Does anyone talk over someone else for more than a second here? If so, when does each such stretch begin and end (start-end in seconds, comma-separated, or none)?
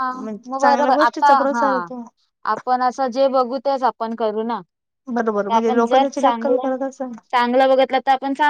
5.4-6.7